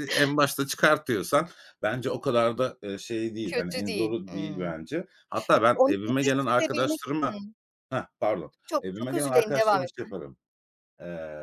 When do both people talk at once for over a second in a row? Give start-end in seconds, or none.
3.4-4.8, 5.7-7.4, 8.7-10.1